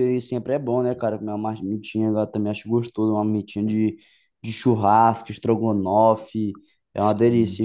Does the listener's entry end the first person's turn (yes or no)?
no